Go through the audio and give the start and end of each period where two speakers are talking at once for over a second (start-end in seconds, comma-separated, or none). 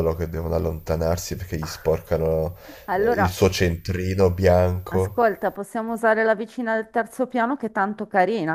none